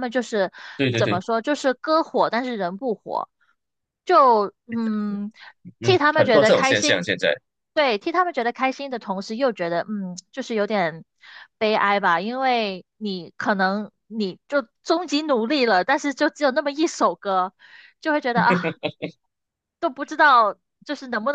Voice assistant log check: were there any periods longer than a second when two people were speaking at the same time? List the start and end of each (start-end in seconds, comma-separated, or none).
5.8-7.0